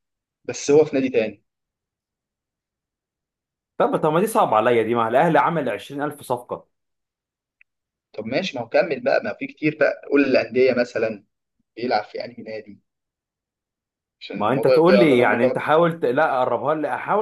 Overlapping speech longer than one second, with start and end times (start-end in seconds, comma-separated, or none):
14.4-15.8